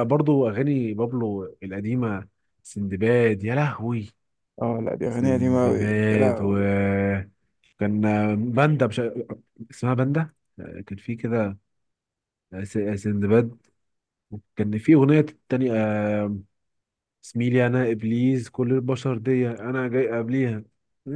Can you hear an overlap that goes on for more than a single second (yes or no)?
yes